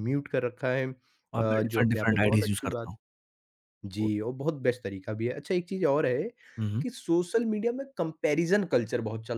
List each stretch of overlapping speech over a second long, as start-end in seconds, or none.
1.3-2.9